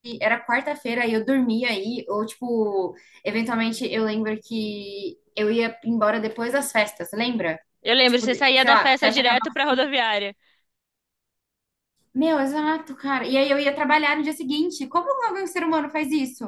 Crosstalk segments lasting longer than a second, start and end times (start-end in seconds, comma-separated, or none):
8.1-9.5